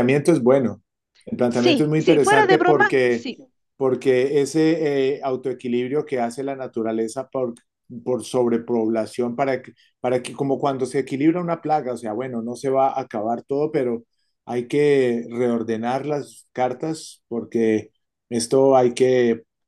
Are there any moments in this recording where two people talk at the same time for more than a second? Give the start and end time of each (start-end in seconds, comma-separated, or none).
1.5-3.3